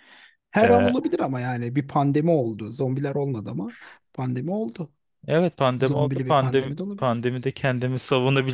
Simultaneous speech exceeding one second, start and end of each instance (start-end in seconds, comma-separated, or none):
5.8-7.2